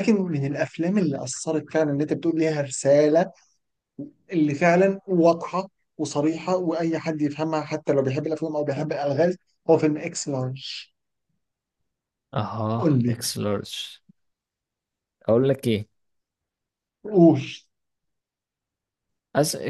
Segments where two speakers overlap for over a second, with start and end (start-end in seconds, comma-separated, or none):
none